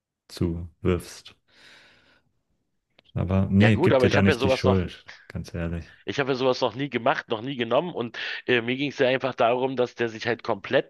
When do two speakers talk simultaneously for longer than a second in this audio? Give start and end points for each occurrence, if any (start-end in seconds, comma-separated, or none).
3.6-4.8